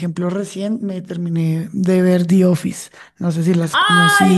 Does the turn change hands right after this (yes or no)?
yes